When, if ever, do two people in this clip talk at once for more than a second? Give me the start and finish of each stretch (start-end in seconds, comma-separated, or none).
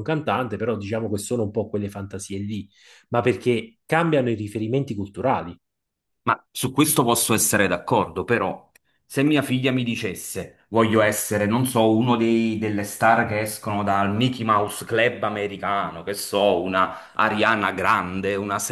none